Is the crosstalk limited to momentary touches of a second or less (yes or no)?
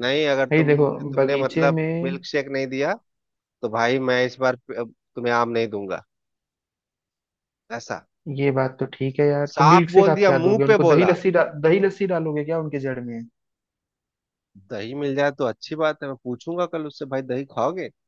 no